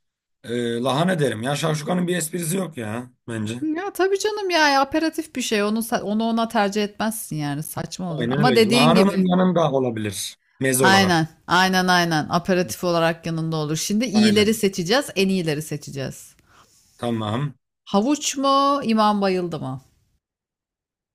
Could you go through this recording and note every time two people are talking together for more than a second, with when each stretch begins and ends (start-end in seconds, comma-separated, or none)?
8.1-9.3